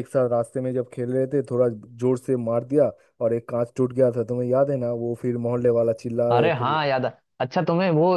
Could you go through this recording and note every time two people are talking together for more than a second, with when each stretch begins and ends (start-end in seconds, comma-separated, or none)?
none